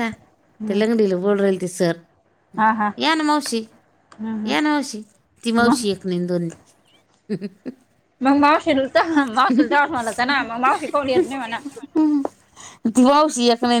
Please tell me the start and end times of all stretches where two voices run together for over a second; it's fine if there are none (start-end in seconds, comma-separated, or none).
none